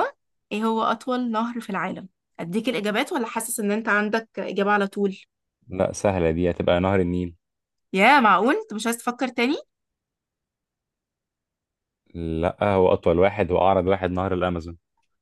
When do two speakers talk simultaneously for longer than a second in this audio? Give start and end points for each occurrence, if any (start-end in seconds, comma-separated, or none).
none